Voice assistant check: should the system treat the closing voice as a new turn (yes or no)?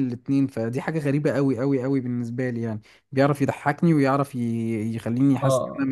yes